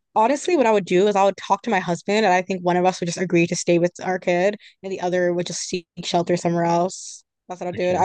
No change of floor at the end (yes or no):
yes